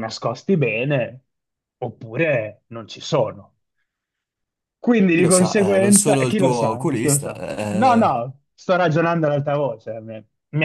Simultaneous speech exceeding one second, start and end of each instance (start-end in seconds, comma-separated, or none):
5.1-8.2